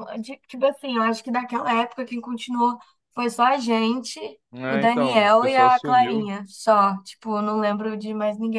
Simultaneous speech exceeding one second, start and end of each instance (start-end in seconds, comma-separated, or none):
4.7-6.3